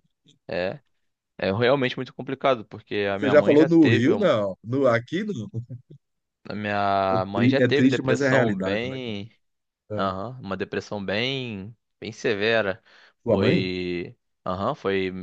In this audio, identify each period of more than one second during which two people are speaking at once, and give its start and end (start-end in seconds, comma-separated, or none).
3.1-4.3, 7.1-9.2